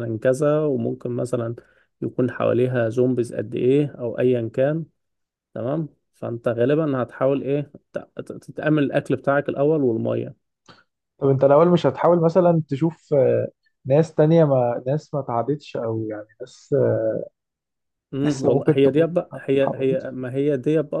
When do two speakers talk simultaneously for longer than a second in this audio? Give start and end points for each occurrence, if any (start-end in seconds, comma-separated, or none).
18.2-20.1